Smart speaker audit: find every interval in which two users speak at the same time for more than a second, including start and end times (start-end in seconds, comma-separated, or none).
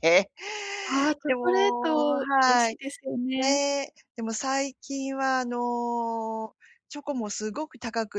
1.3-2.8